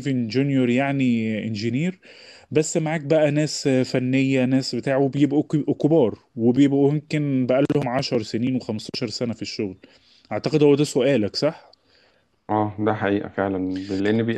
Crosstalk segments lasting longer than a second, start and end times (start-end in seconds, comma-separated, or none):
none